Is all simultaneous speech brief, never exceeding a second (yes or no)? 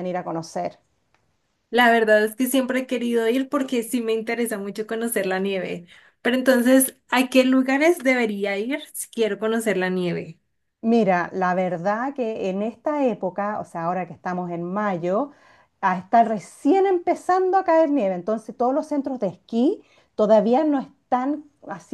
yes